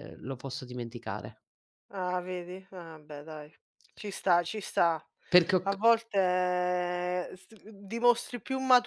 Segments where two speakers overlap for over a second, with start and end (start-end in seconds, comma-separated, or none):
none